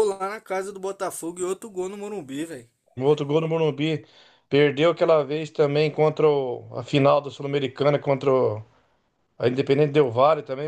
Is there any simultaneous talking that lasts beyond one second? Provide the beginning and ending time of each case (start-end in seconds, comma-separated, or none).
none